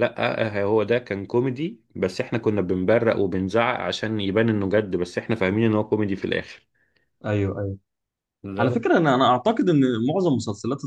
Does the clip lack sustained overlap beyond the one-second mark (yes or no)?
yes